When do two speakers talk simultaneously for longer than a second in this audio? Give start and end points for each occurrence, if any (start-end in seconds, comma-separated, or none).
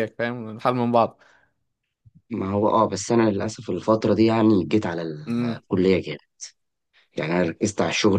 none